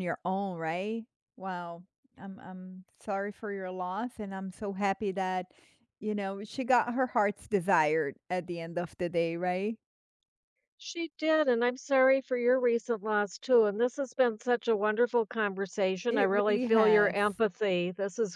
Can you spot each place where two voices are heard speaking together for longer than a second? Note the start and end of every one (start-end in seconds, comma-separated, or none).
16.1-17.4